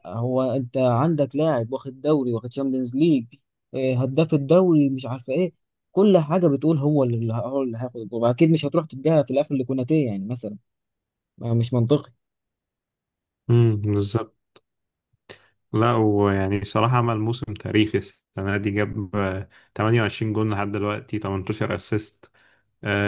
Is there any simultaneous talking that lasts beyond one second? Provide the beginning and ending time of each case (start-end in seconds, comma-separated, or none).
none